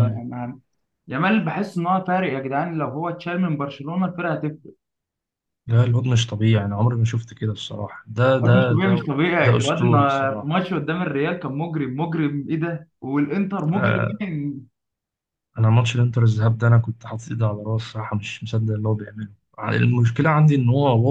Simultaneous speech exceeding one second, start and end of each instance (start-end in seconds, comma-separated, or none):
8.4-10.5